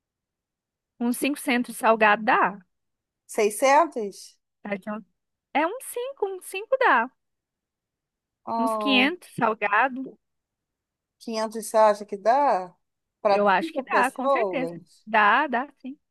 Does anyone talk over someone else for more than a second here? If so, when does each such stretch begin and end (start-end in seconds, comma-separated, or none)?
13.3-15.1